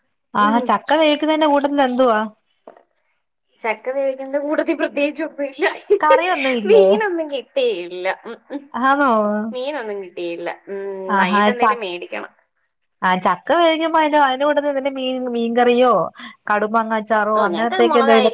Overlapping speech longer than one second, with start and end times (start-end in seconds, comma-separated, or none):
none